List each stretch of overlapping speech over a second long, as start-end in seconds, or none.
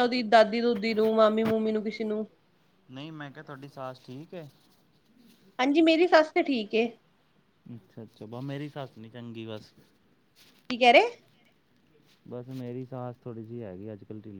none